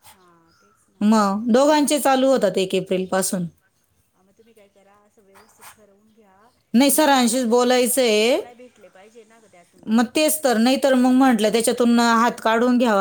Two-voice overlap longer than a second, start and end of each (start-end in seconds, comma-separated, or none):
6.8-8.4